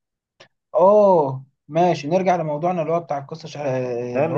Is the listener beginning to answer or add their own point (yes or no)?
yes